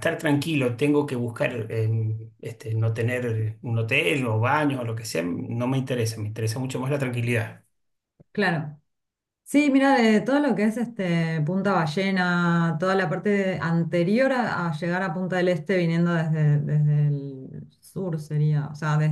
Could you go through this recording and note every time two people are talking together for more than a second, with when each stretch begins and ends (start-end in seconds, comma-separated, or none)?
none